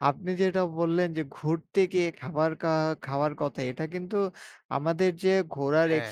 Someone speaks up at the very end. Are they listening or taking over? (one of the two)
listening